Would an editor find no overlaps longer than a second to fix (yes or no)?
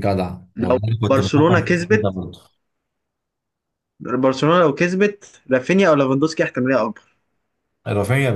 no